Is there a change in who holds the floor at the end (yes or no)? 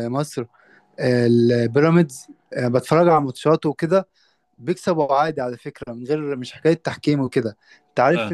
no